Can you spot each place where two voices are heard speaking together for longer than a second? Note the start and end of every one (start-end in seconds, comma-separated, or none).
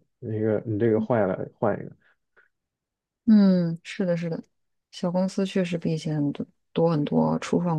none